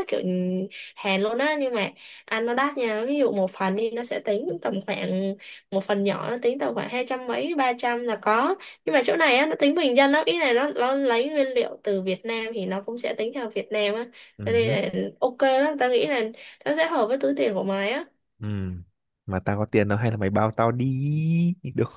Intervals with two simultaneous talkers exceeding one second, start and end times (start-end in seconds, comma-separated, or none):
none